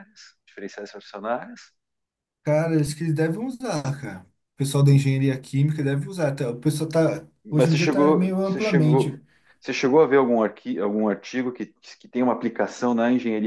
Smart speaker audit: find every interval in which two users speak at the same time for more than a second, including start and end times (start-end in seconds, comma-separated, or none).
7.4-9.2